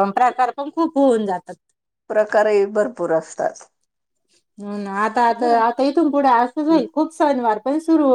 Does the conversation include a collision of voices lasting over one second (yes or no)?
no